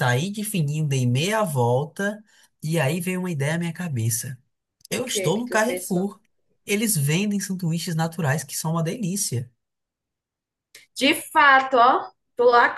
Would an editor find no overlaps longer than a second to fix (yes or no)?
no